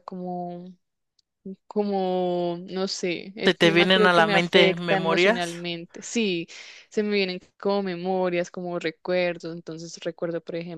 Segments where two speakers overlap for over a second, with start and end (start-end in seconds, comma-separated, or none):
3.4-5.7